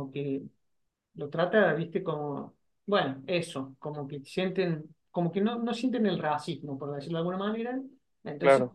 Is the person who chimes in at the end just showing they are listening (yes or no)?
yes